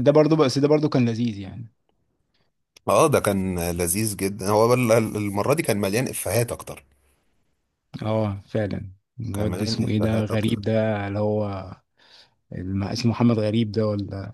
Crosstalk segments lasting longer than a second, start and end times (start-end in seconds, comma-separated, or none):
9.3-10.6